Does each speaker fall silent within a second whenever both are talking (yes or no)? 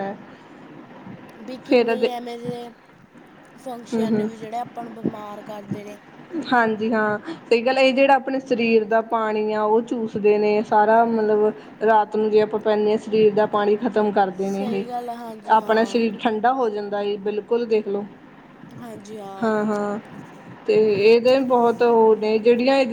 no